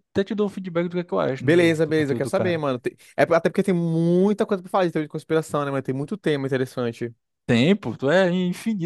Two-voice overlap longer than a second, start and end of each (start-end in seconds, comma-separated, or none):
1.4-2.6